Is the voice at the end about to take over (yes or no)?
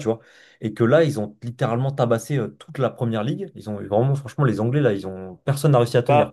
yes